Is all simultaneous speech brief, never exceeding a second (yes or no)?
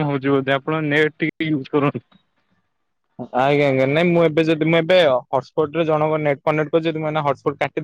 yes